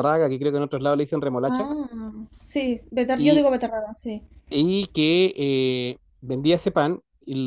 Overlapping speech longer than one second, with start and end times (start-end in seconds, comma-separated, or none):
none